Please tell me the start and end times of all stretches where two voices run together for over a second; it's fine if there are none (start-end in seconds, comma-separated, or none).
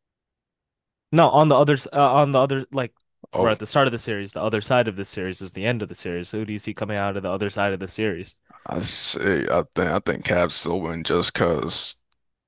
none